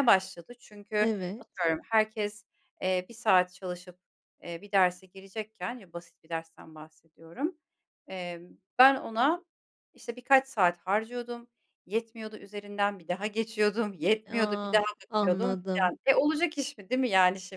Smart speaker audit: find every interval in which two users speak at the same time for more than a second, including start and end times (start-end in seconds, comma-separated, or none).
14.3-15.9